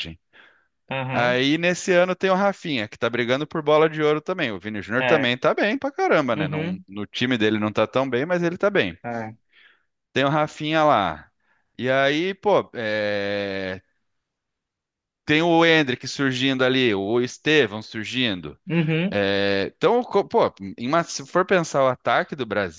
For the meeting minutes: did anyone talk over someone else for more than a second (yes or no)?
no